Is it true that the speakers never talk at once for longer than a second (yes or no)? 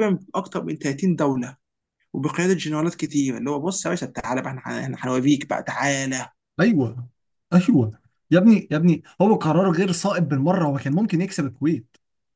yes